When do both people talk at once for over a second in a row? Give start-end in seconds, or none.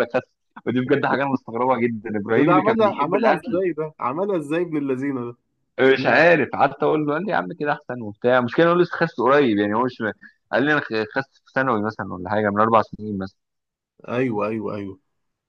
2.4-3.6